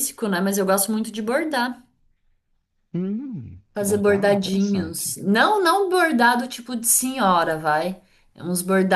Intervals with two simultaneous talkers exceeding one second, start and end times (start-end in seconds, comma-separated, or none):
3.8-5.1